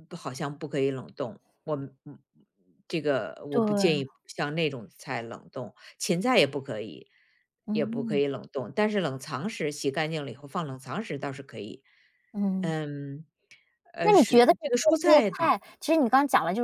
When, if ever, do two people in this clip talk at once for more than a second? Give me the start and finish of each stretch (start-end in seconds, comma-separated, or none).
14.0-15.5